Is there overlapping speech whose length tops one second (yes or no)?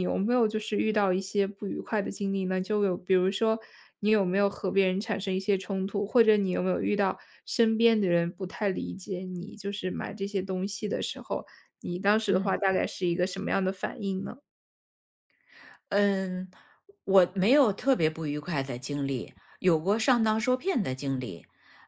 no